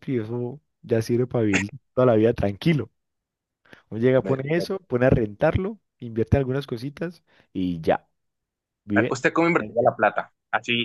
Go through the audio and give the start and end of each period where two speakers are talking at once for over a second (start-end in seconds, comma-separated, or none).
none